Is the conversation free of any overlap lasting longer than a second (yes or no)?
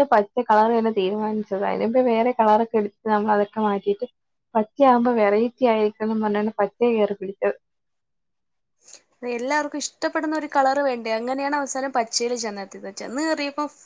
yes